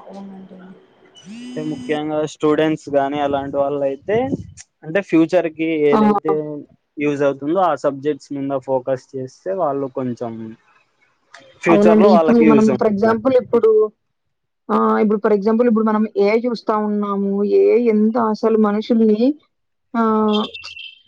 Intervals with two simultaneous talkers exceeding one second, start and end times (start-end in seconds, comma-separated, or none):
11.7-13.1